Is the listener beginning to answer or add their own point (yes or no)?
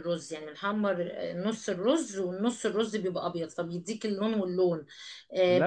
no